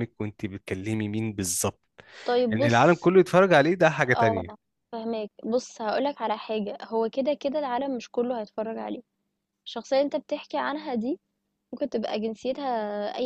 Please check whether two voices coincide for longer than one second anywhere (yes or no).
no